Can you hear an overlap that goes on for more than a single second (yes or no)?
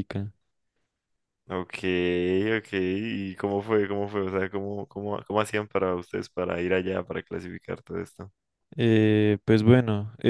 no